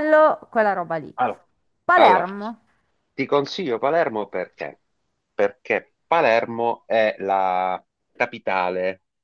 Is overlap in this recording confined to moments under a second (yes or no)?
yes